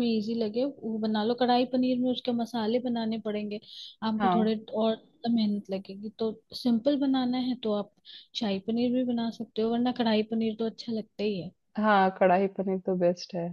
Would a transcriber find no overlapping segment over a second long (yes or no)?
yes